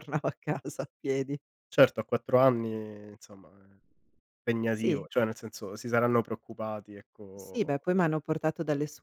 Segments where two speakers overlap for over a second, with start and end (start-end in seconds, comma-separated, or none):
none